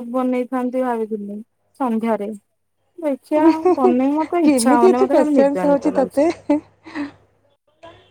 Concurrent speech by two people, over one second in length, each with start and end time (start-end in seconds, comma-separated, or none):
4.5-6.2